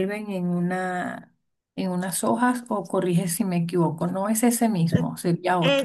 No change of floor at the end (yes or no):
no